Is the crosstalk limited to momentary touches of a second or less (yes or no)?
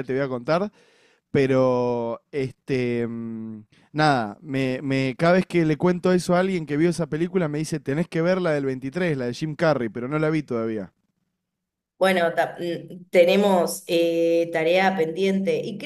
yes